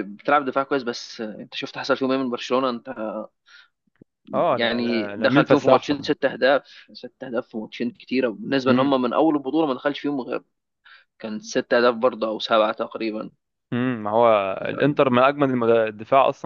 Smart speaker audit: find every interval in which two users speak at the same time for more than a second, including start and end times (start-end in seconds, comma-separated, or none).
4.6-6.1